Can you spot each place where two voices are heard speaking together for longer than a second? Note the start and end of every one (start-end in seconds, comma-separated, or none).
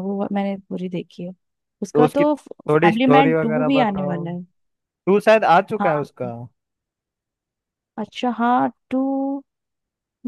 1.9-4.2